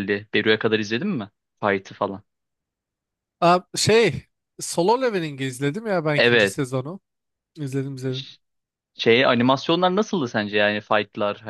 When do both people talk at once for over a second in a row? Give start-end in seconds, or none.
none